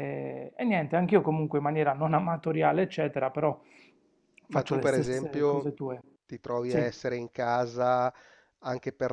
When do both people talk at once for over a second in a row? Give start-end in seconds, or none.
4.5-5.8